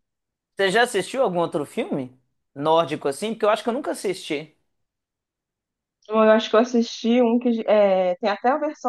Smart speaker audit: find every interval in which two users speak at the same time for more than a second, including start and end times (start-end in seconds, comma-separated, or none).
none